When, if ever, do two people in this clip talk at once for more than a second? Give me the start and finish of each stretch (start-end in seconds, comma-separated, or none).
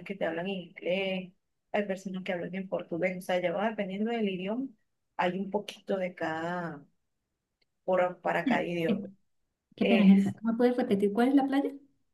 none